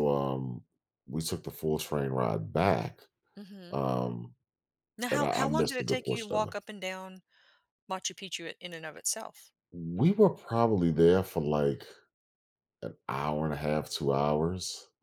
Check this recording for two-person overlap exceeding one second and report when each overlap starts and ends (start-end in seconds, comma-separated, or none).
5.1-6.5